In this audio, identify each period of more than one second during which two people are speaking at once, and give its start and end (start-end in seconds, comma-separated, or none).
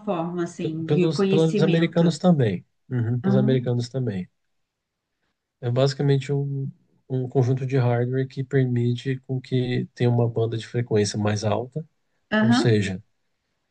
0.8-2.2